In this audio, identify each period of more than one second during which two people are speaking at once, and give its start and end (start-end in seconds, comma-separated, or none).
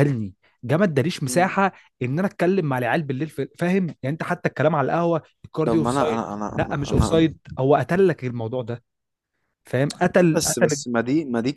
5.6-7.3